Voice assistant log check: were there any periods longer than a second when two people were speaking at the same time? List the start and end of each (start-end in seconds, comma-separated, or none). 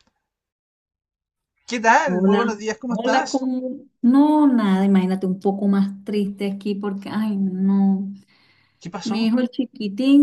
2.0-3.5